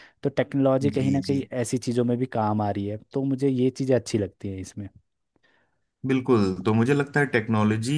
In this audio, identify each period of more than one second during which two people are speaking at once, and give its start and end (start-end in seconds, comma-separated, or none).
none